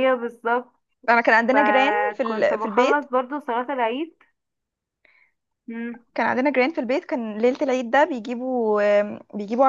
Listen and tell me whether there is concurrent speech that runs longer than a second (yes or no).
yes